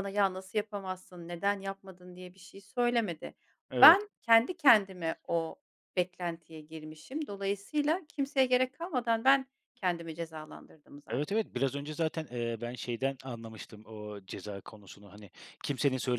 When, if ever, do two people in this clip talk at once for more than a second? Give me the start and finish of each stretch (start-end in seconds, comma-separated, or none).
none